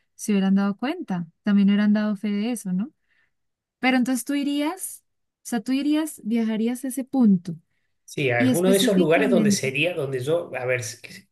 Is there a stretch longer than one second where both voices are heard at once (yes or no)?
yes